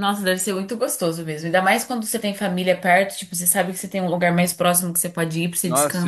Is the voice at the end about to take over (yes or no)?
yes